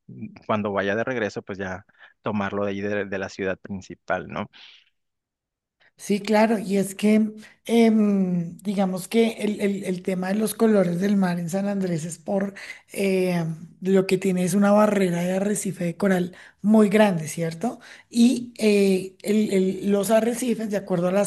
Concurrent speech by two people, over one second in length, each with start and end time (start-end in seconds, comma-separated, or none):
none